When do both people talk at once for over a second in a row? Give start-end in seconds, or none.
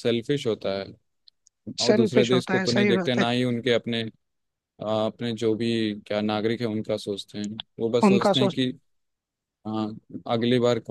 1.8-3.2